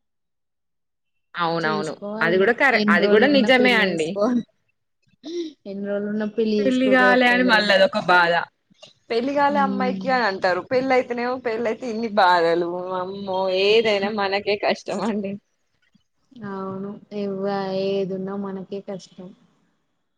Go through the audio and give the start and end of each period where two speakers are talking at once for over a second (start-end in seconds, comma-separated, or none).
1.6-4.1